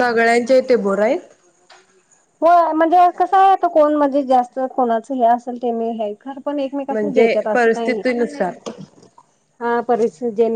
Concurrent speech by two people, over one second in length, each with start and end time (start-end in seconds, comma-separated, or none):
none